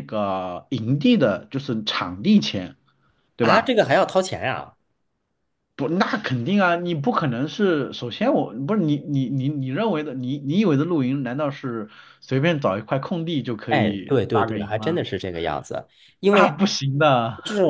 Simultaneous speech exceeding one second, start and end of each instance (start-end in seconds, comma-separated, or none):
13.7-15.0